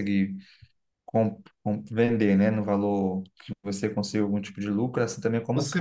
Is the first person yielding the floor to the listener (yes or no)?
yes